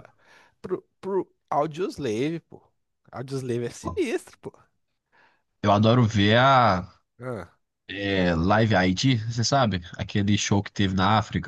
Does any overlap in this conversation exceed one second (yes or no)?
no